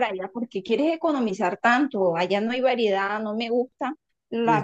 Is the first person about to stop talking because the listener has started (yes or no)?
yes